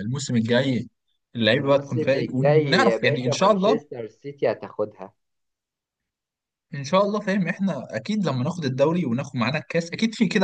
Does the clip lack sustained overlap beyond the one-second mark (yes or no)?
no